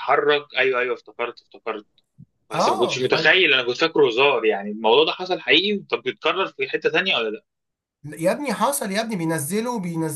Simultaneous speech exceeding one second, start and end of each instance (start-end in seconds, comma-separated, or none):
none